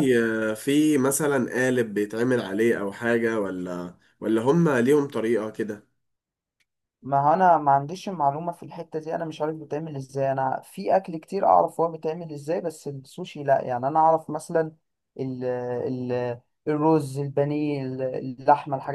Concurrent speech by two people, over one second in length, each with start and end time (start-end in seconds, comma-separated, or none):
none